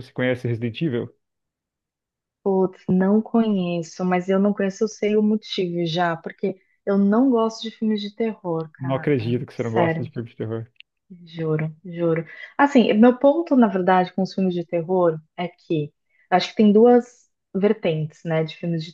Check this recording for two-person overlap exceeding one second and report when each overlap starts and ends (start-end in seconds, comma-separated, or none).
8.8-10.1